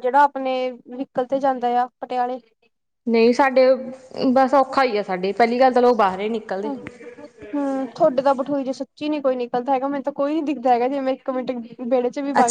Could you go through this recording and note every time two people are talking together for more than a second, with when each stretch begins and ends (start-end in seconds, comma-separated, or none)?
none